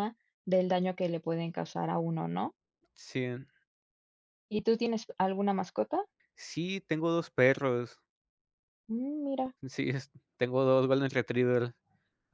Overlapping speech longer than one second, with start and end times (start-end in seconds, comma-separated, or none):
none